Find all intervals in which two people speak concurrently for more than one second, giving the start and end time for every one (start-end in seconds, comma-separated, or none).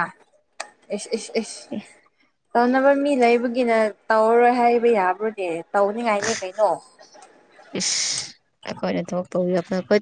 none